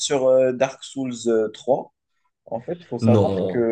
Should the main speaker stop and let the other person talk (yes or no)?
no